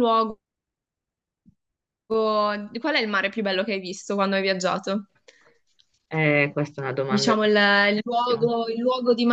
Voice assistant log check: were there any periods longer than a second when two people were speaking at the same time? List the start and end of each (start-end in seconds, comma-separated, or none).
7.1-8.5